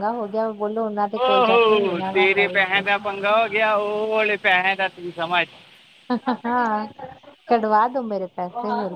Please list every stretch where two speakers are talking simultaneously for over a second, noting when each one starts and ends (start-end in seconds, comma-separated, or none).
1.2-3.1